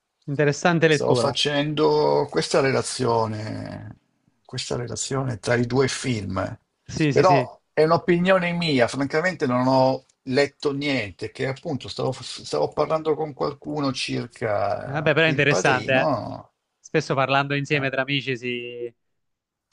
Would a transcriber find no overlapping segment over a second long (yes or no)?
no